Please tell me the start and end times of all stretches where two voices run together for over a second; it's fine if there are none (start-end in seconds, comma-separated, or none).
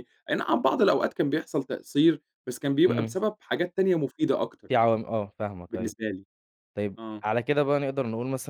none